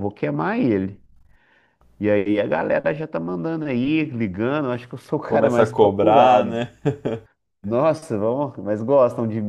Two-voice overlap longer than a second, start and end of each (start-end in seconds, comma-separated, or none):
5.2-6.5